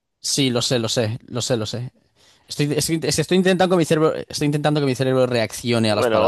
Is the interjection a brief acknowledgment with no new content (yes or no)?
no